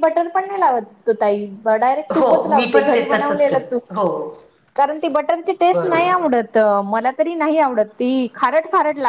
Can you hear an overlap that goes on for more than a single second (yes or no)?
yes